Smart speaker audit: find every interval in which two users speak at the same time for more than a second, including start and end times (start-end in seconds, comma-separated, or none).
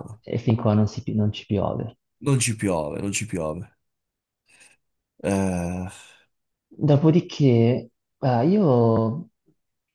none